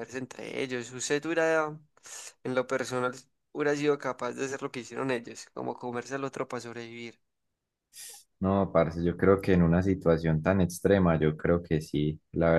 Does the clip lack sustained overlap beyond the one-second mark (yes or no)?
yes